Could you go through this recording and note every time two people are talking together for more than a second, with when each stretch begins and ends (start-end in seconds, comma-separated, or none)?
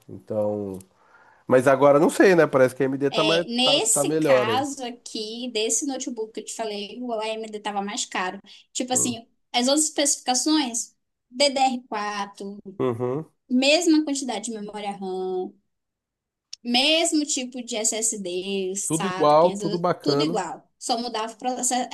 3.1-4.6, 18.9-20.4